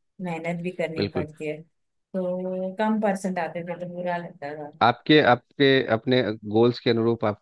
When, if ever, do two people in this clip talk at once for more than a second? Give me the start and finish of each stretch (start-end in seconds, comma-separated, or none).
none